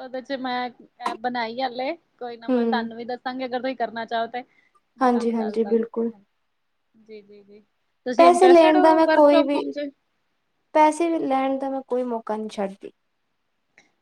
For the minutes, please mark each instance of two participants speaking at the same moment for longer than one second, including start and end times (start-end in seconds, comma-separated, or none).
8.2-9.6